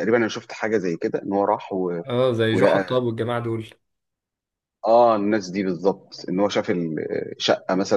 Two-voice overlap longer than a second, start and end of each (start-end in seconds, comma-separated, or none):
none